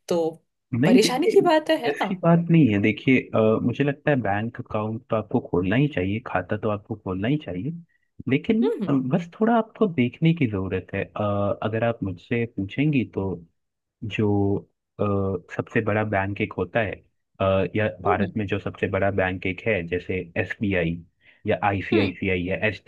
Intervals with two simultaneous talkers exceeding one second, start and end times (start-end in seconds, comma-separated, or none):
0.8-2.1